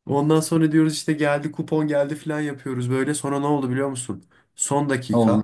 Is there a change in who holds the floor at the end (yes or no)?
no